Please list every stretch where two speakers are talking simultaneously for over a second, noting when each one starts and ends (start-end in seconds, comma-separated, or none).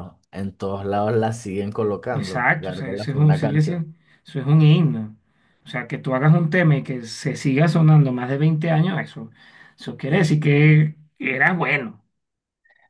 2.1-3.8